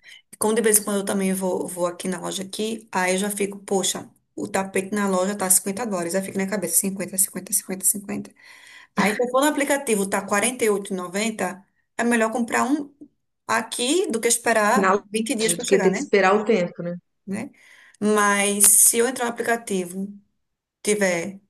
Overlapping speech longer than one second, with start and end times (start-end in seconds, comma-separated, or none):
14.7-16.1